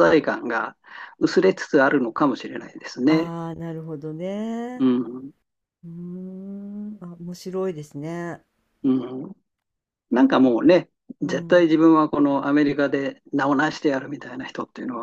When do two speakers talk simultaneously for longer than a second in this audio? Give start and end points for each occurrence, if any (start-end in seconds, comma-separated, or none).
none